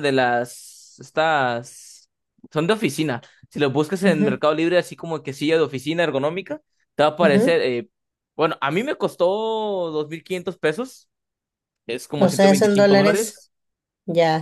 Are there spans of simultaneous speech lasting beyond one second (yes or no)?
yes